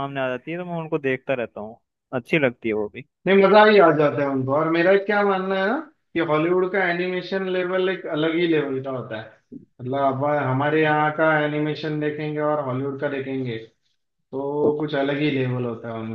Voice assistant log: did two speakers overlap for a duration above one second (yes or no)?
no